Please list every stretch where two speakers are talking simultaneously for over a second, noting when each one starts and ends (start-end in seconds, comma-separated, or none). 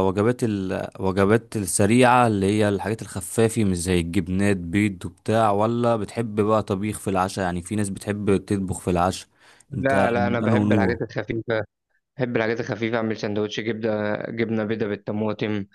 9.7-11.0